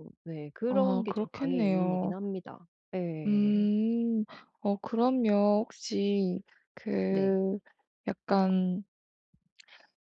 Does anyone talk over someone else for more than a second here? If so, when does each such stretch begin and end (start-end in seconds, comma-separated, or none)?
0.7-2.2